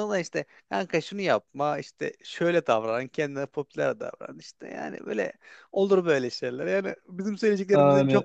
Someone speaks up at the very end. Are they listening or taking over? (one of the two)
listening